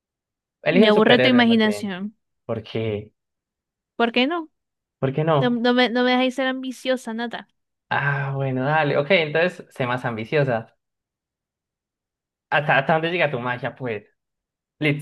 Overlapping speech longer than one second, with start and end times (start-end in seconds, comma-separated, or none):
0.7-1.9